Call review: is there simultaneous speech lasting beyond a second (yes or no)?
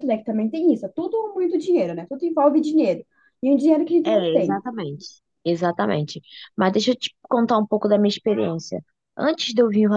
no